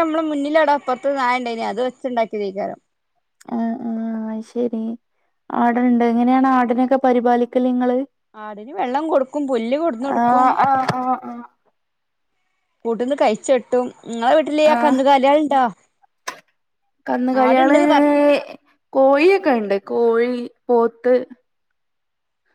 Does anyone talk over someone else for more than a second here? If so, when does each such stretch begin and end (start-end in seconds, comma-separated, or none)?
none